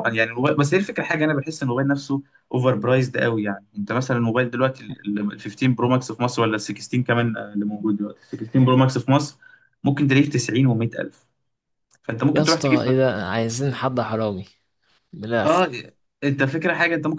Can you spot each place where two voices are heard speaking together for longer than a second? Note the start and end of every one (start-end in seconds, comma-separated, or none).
none